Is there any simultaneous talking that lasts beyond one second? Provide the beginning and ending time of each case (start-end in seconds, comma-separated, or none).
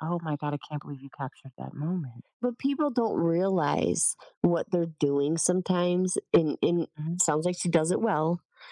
none